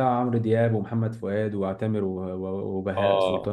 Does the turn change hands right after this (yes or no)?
yes